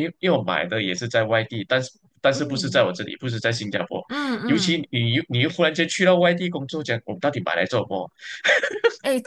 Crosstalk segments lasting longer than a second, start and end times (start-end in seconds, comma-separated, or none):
none